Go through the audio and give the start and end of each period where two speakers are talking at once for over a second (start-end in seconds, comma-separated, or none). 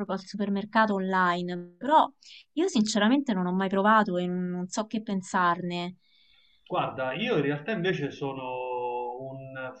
none